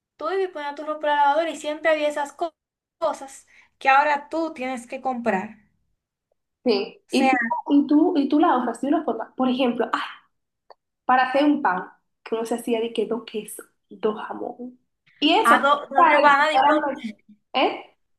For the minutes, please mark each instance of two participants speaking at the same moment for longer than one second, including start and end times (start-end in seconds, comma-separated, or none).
15.4-16.9